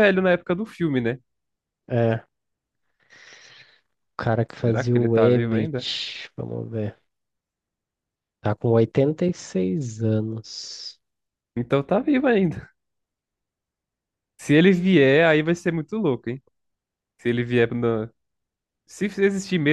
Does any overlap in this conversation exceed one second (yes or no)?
yes